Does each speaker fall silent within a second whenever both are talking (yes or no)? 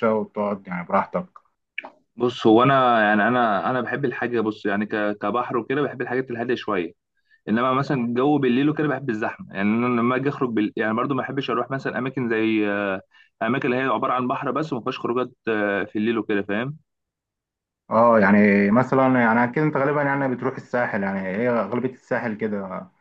yes